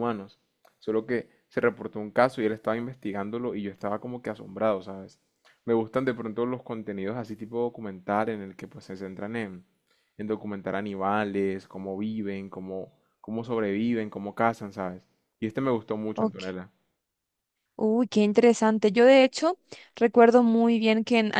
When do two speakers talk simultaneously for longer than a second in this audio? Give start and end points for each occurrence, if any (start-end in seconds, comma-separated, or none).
none